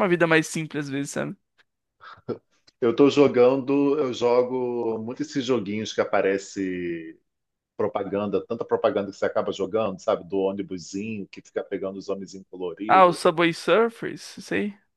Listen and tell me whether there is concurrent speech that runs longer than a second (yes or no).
no